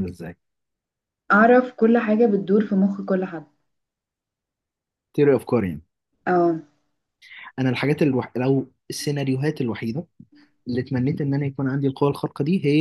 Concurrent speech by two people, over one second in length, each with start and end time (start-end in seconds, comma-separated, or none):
none